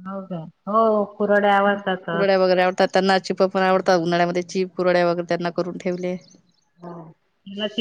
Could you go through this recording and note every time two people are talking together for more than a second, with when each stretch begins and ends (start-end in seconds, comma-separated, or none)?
none